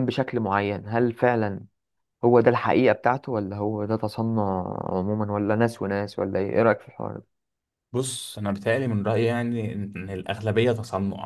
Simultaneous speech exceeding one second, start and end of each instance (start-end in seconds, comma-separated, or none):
none